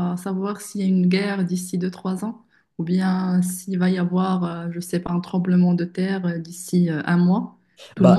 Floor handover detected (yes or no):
yes